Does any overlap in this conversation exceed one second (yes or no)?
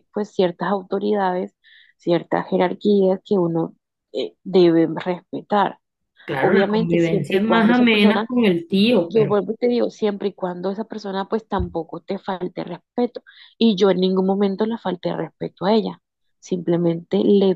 yes